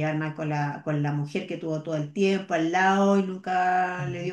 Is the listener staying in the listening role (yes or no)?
no